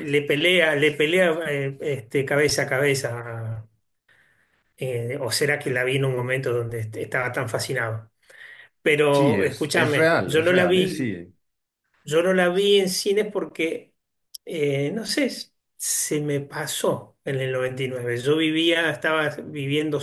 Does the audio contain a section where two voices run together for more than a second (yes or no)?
yes